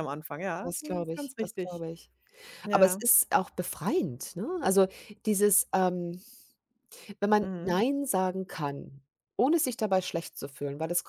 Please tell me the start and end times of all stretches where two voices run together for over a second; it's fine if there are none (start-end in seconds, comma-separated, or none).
0.6-1.8